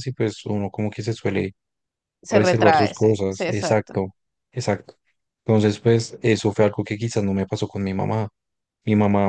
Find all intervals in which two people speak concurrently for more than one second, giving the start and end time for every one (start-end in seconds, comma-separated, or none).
2.3-4.0